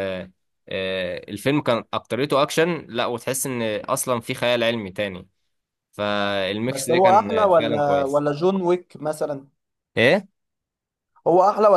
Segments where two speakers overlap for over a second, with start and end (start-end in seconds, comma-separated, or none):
6.7-8.2